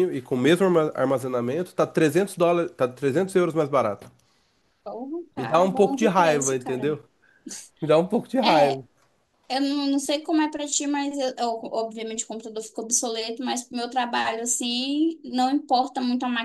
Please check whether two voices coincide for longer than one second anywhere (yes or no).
yes